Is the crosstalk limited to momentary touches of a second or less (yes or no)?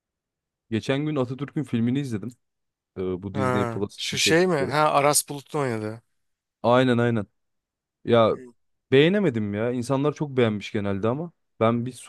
no